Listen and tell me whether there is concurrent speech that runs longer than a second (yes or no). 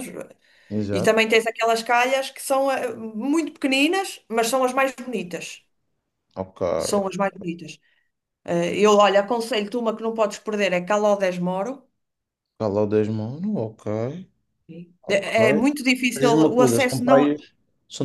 yes